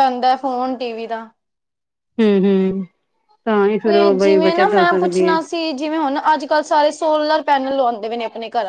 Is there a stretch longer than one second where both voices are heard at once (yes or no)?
yes